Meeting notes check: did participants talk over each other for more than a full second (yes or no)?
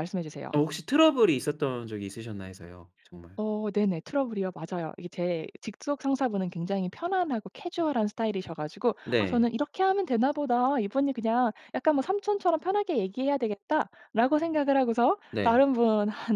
no